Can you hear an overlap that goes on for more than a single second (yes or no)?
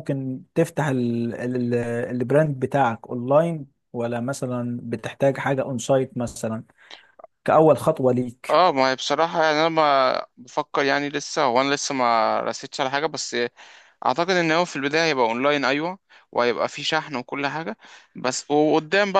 no